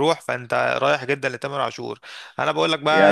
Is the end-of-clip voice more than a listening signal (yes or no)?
yes